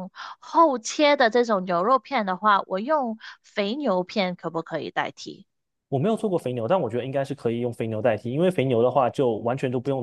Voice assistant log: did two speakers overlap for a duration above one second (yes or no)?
no